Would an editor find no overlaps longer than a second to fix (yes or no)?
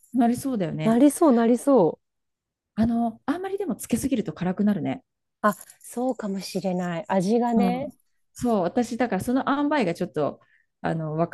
yes